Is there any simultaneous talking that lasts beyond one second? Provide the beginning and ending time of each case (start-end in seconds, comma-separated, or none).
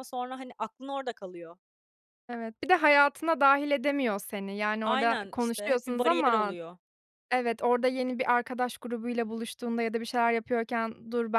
4.8-6.5